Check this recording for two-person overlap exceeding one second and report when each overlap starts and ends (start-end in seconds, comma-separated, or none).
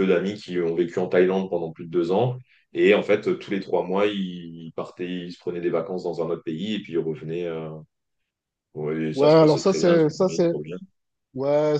9.2-10.5